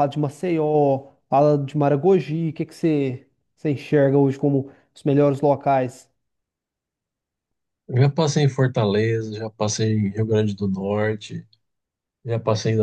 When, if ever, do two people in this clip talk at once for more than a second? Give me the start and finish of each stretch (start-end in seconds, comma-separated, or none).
none